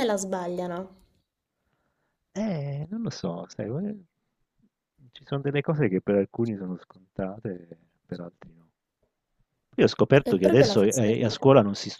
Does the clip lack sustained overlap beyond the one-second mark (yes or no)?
no